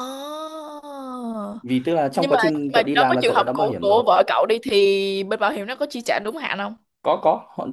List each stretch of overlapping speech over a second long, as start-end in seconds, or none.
2.1-4.0